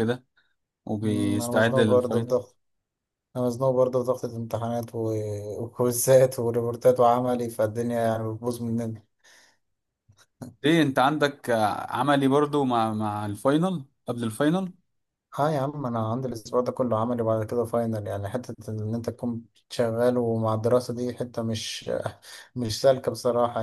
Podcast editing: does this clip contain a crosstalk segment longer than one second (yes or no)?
yes